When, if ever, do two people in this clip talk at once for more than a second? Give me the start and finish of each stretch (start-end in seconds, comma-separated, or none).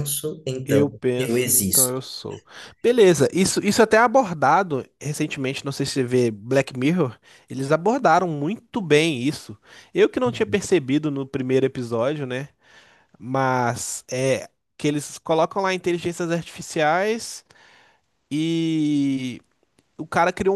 0.7-1.9